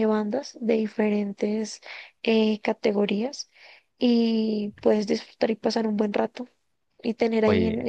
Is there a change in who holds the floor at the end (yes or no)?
no